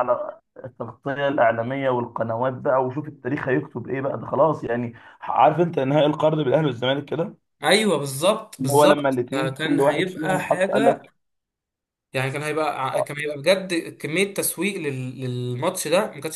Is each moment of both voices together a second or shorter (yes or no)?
no